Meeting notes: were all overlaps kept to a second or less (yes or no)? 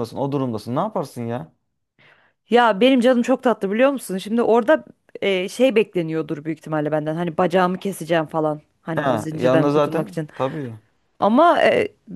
no